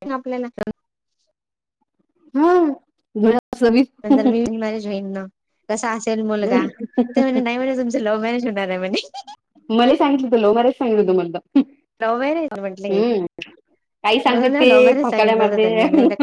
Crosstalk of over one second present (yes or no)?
yes